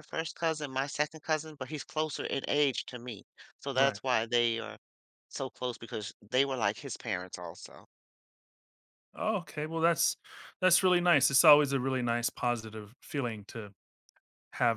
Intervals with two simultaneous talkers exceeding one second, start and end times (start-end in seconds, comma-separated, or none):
none